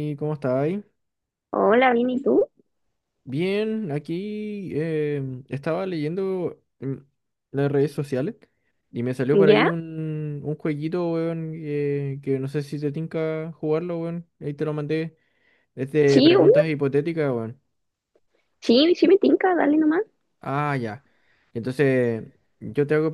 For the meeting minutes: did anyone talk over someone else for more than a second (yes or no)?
no